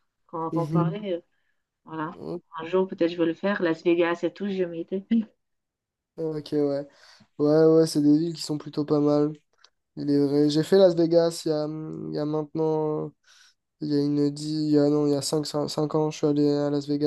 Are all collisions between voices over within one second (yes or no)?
yes